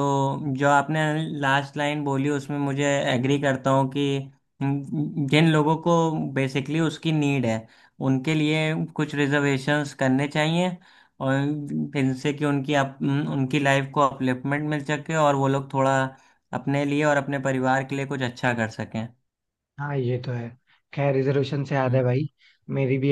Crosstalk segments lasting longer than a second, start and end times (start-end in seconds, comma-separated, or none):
none